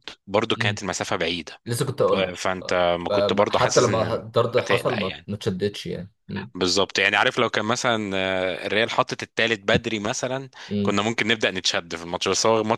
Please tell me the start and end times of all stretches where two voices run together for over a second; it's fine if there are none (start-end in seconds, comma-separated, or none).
2.1-5.3